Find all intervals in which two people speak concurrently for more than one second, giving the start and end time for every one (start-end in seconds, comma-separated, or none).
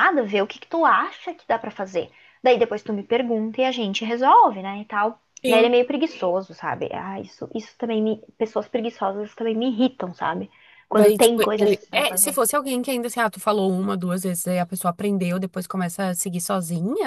10.9-12.4